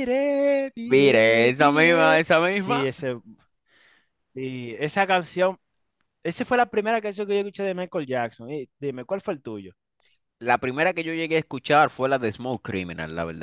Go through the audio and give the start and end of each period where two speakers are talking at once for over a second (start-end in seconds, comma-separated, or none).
0.9-2.8